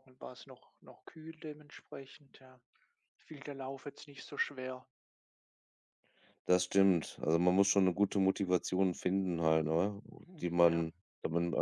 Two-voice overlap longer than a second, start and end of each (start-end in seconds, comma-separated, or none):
none